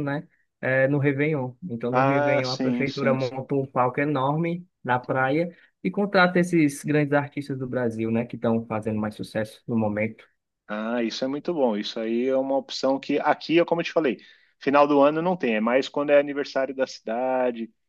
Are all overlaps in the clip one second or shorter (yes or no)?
no